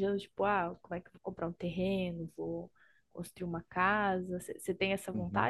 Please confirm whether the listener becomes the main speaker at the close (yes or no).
yes